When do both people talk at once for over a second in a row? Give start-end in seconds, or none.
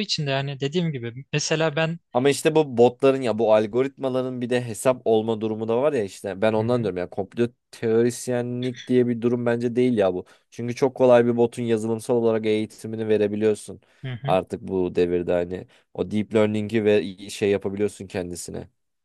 none